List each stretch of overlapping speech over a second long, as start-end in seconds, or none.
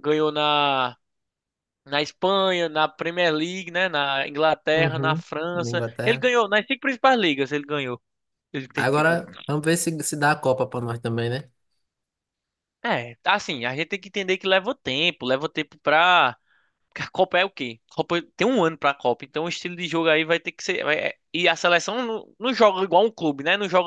4.7-6.3